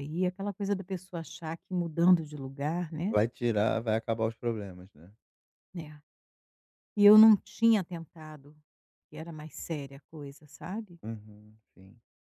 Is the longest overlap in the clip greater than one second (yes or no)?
no